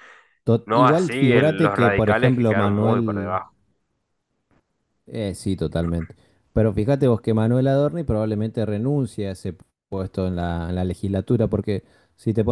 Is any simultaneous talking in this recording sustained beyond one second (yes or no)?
yes